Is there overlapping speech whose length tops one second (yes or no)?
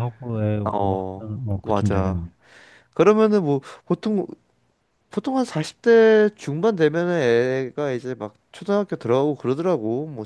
yes